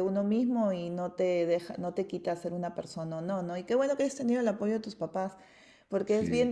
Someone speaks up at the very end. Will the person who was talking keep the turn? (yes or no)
yes